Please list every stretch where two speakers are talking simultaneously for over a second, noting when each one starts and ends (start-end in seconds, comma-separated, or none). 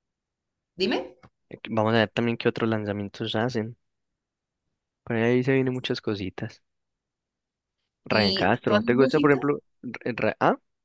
8.1-9.5